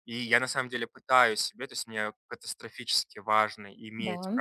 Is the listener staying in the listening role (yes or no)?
yes